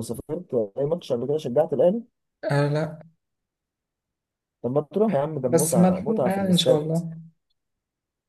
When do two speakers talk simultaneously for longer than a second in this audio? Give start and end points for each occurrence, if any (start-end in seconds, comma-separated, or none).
5.5-6.9